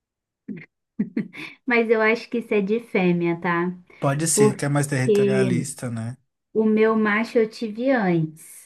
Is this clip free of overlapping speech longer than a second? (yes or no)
no